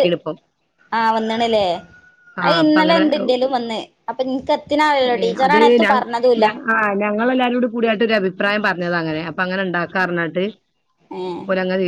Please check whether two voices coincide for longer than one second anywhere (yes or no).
no